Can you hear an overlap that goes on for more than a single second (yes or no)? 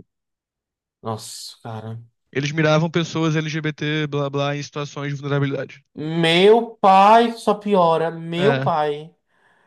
no